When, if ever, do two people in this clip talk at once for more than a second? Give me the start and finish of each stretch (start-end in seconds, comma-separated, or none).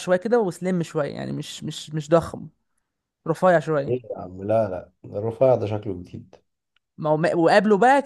none